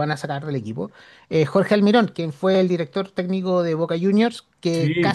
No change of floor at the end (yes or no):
yes